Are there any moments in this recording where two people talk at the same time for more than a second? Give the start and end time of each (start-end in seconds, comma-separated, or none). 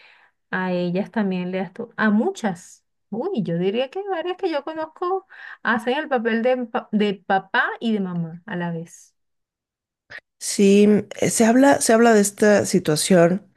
none